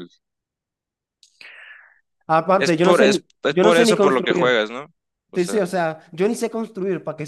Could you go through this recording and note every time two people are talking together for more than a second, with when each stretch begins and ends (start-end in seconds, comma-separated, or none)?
2.6-4.7